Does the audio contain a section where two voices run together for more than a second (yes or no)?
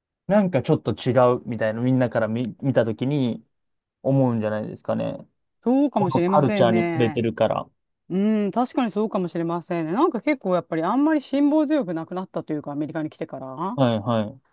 yes